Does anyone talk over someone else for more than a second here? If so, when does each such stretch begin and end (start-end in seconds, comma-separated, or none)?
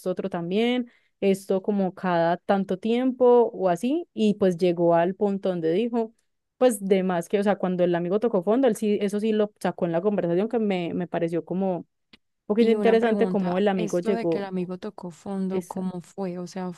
12.6-14.4